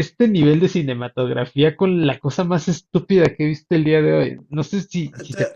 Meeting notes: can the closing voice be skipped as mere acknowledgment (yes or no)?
no